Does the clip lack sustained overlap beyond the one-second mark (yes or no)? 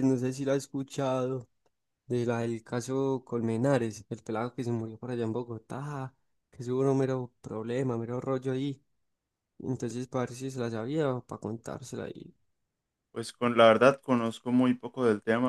yes